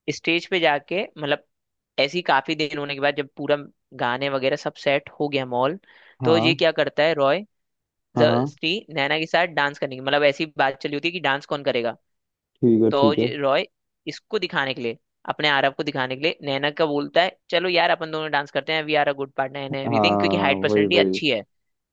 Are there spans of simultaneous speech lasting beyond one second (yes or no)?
yes